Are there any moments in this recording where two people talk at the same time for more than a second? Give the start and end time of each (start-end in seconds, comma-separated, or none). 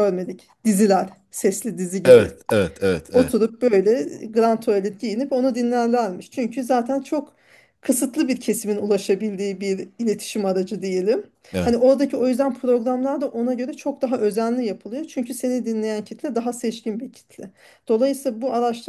none